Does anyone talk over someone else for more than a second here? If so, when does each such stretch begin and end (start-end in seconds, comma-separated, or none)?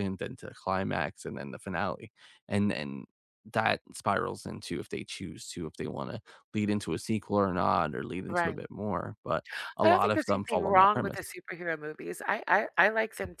9.8-11.3